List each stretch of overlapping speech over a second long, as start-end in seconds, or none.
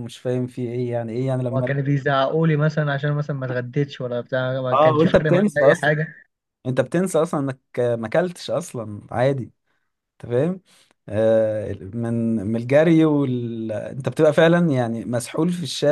4.7-5.9